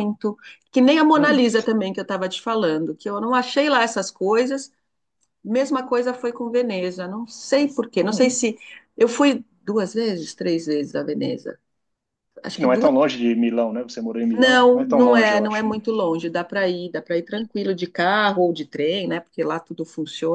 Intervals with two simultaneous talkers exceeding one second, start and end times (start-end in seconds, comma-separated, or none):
14.4-15.8